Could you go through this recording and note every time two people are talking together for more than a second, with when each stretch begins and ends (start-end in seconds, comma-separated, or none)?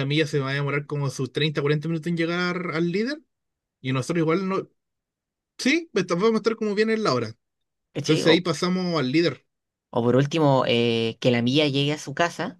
none